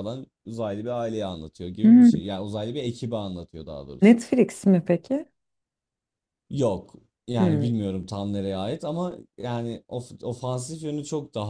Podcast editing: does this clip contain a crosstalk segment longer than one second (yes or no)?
no